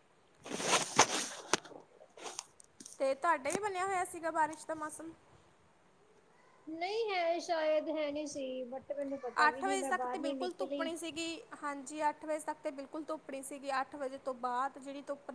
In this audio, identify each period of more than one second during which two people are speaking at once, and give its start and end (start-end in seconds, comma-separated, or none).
9.5-10.9